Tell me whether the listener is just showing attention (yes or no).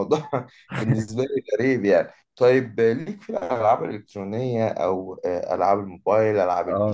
no